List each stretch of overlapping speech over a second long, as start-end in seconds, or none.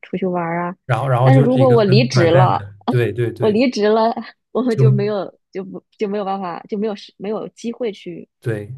1.2-2.6